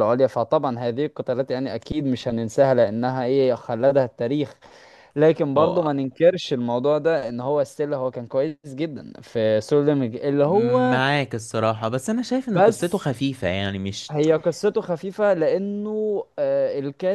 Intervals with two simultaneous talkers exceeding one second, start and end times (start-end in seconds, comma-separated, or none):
none